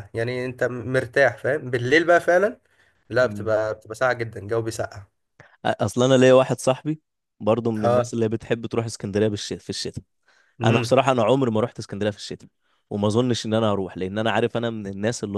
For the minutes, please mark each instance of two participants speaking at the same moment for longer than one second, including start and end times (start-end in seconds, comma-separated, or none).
none